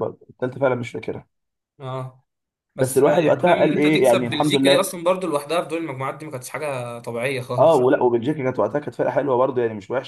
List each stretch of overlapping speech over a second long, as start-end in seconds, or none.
2.8-4.9